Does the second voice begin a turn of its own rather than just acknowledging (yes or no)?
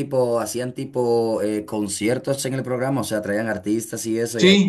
yes